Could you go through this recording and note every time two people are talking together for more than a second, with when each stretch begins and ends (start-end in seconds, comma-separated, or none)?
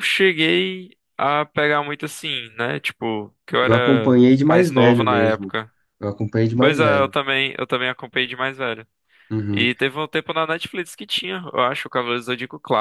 3.6-5.5